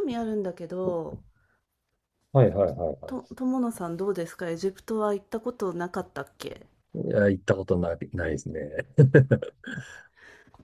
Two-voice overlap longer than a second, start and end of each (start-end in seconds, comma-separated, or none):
none